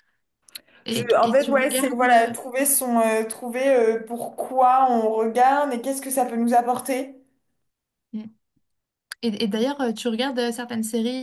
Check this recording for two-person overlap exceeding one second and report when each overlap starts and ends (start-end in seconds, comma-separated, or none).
0.9-2.3